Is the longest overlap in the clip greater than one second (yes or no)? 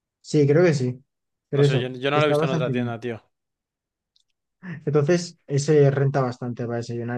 yes